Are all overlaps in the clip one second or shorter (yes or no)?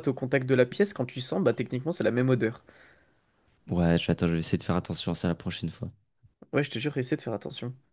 yes